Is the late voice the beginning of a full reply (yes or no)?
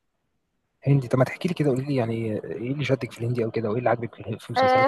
yes